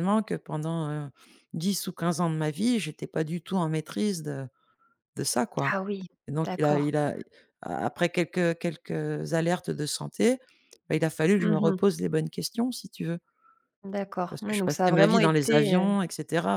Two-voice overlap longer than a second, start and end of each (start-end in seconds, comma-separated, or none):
14.3-16.0